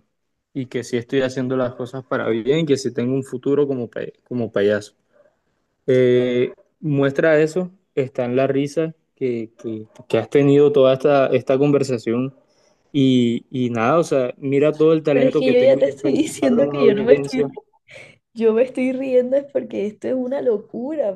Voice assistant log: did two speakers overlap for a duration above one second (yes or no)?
yes